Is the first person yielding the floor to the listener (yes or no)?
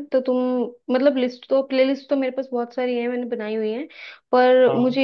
no